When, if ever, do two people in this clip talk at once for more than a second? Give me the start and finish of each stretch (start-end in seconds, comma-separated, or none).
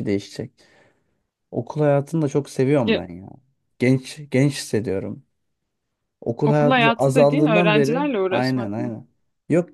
6.5-8.9